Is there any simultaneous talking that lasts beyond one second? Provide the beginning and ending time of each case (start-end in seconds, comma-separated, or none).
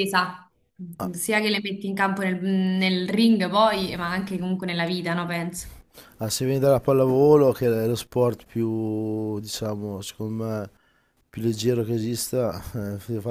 none